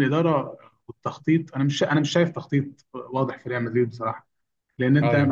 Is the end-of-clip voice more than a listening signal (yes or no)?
no